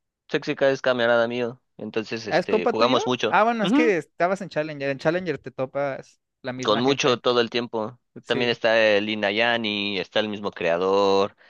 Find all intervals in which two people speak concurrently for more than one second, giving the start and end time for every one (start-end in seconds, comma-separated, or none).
2.2-3.9